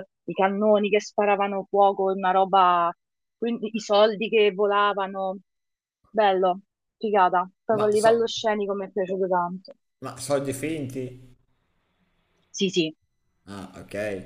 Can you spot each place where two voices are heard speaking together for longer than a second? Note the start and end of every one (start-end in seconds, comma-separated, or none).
none